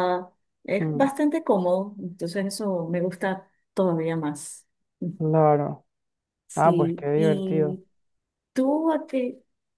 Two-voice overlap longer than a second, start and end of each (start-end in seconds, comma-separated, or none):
6.5-7.8